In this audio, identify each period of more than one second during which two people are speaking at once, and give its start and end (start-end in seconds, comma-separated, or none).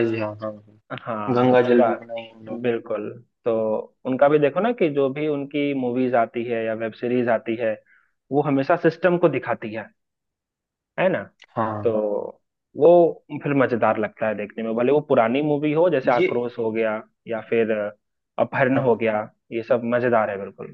1.4-2.6